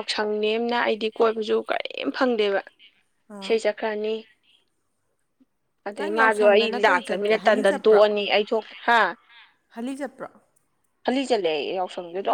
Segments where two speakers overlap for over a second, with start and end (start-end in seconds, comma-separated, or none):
6.0-8.0